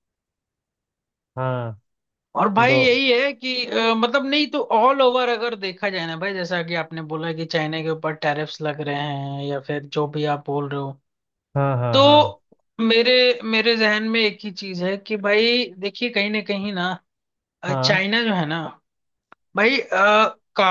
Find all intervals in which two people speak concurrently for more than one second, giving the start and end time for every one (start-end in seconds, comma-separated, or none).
none